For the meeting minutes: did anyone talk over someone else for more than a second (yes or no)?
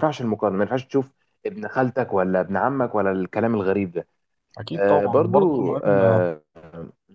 yes